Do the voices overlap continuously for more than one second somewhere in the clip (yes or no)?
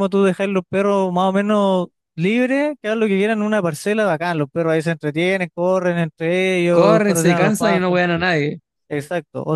yes